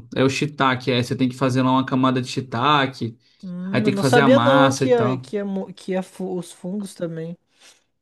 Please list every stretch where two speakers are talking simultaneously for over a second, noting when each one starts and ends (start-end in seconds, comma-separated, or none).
3.7-5.3